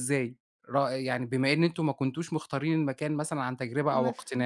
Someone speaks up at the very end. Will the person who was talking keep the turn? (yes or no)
no